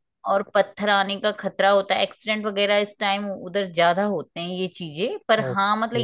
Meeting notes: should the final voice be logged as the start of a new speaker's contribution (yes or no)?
no